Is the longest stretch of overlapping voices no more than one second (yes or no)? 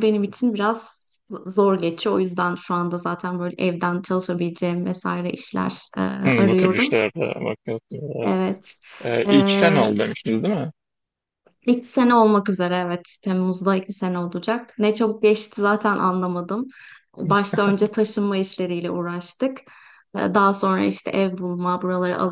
yes